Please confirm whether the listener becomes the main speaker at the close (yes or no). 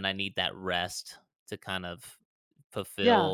no